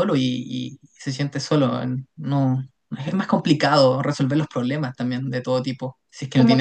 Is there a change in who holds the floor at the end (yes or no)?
yes